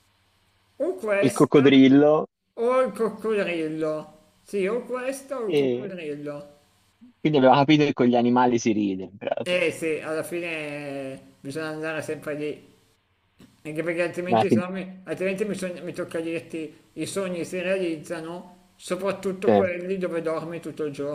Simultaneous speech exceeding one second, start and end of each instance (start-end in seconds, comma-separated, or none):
none